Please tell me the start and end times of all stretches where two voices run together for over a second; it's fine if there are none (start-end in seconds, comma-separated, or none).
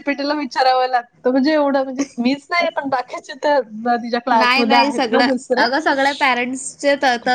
none